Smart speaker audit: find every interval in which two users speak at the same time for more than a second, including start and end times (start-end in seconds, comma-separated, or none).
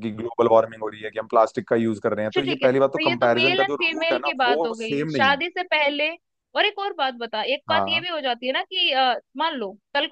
2.3-5.4